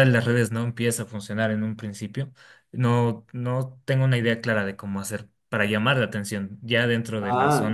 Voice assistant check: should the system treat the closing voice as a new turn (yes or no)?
yes